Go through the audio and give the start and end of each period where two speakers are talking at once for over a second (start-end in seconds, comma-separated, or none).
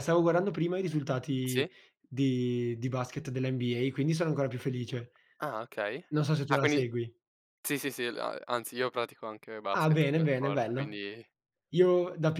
9.7-11.0